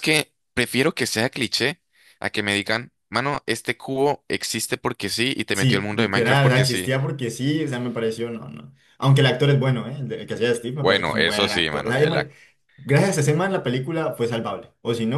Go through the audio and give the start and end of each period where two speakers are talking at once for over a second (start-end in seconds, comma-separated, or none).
5.5-6.9, 10.8-12.3